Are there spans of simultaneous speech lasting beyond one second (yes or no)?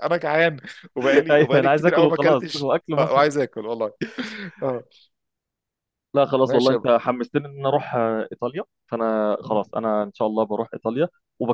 yes